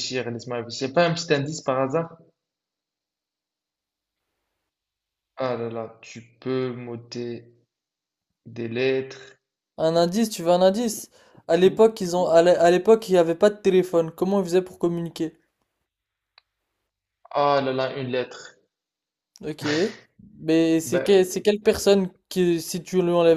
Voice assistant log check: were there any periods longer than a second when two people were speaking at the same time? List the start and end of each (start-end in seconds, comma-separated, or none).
none